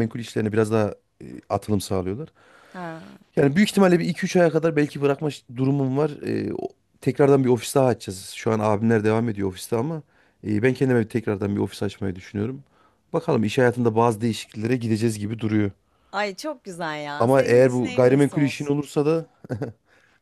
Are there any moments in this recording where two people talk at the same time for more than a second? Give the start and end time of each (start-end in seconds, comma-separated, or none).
17.2-18.8